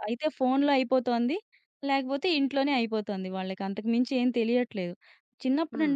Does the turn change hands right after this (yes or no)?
no